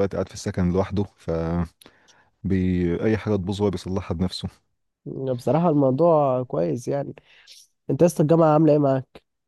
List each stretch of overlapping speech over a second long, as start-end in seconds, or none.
none